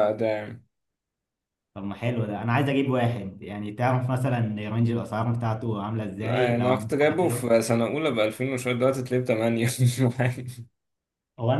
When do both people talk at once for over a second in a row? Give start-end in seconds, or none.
6.2-7.5